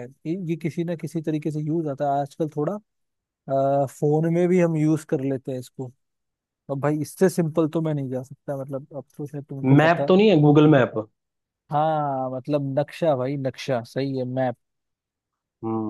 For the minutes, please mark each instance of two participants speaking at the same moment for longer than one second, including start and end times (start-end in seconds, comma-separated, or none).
none